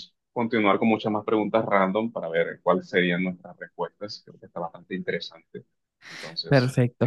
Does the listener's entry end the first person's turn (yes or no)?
yes